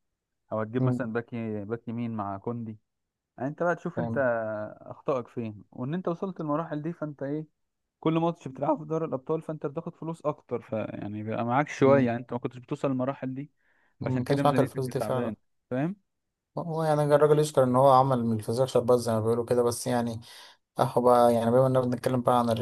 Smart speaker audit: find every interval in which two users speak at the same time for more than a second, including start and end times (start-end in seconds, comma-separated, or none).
14.0-15.3